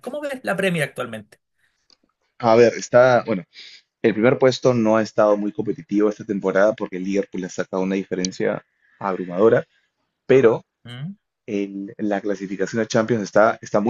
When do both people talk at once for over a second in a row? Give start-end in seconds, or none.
none